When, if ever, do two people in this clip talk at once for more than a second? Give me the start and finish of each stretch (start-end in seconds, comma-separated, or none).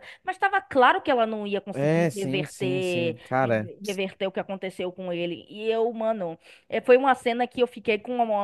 1.7-3.7